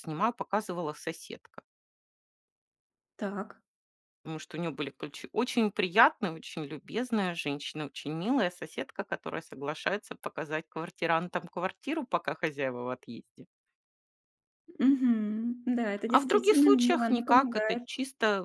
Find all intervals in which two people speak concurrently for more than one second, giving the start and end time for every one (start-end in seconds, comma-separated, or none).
16.1-17.8